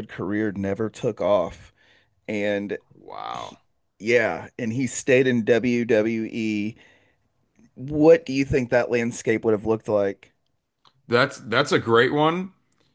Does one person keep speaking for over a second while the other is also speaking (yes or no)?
no